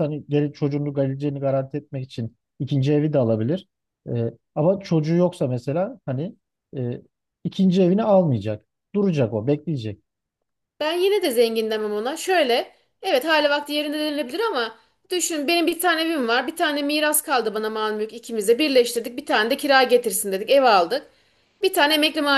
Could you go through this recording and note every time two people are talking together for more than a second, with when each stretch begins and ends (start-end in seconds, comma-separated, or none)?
none